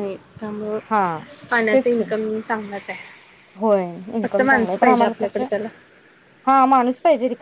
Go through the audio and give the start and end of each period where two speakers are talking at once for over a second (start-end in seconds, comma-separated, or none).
4.2-5.5